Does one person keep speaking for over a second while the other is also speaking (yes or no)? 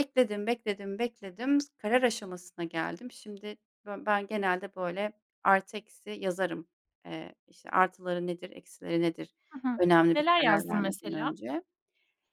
yes